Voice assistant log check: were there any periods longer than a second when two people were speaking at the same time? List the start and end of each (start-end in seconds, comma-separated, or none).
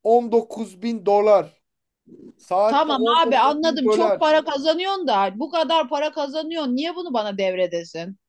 2.7-4.3